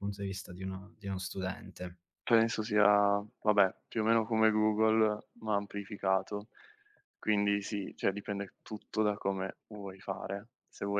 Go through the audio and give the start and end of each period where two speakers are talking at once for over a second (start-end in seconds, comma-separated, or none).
none